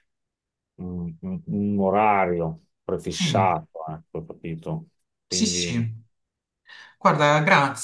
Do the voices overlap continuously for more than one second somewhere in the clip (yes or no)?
no